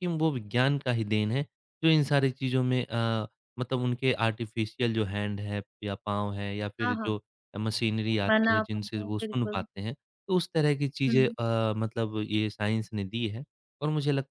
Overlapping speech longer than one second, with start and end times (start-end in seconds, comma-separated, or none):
8.3-9.6